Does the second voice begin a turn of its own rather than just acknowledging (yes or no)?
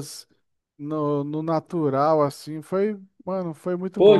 yes